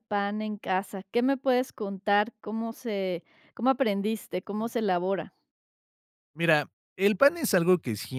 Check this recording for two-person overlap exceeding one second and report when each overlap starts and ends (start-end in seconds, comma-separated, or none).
none